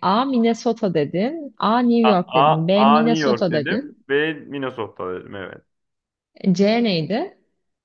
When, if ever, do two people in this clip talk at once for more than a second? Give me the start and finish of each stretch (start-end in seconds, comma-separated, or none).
2.0-3.9